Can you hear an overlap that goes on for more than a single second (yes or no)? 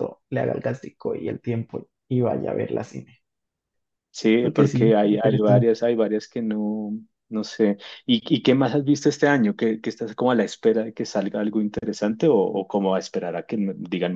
yes